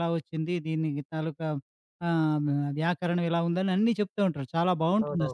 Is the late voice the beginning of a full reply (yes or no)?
yes